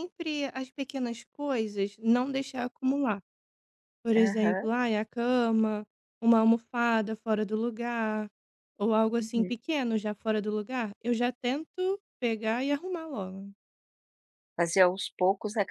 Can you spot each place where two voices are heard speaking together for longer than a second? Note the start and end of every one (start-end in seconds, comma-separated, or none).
none